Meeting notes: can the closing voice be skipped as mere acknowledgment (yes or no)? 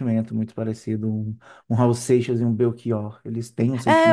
no